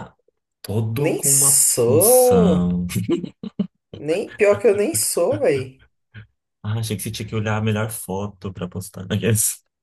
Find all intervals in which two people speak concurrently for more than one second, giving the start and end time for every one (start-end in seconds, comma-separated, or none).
1.0-2.6